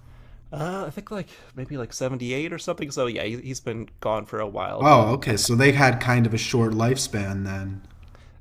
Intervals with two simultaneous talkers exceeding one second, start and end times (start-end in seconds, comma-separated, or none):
none